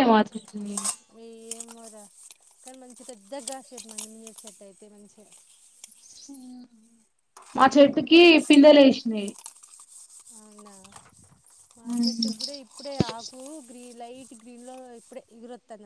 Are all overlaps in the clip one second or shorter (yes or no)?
yes